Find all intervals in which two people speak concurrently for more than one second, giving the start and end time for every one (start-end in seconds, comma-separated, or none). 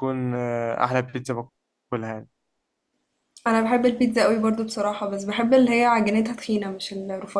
none